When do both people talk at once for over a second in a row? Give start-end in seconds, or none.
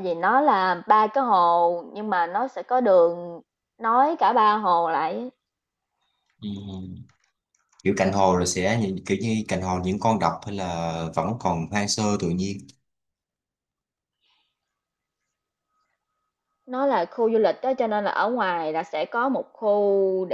none